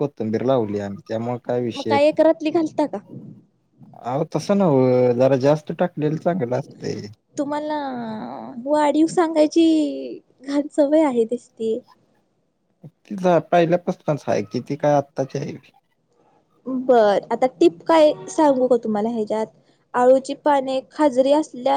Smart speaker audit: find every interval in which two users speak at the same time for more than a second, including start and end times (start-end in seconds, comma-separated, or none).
none